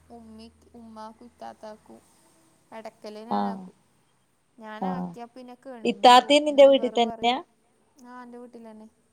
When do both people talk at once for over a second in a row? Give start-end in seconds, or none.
5.9-7.4